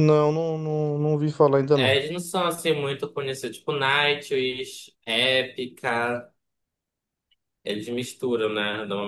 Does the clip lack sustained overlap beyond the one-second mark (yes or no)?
yes